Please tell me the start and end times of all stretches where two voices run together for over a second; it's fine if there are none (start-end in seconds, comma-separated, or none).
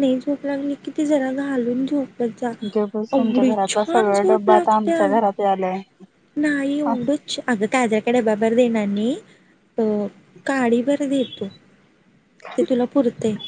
3.2-5.0